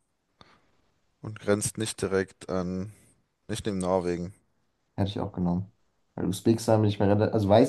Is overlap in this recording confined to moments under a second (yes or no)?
yes